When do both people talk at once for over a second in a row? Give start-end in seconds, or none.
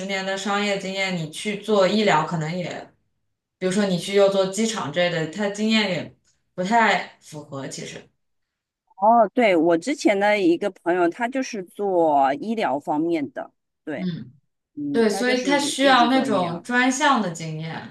14.9-16.6